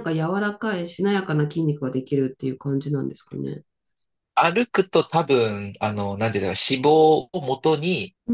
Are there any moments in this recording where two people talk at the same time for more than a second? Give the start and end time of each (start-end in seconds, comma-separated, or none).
none